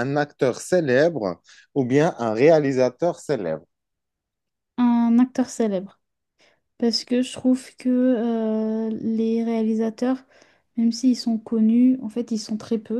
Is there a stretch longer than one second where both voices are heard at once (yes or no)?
no